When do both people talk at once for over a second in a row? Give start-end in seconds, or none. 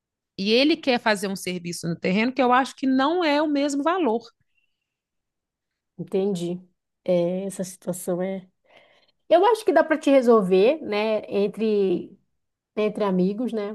none